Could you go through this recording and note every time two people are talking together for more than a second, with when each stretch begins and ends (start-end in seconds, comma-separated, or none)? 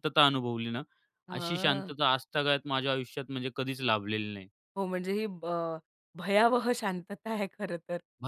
none